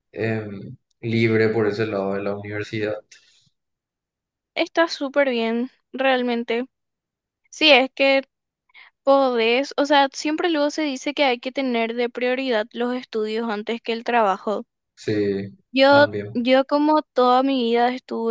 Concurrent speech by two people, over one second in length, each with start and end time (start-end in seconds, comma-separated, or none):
none